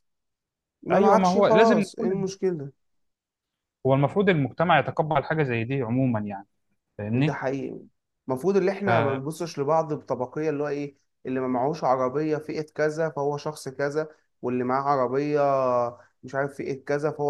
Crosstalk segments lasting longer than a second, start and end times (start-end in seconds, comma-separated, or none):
0.9-2.3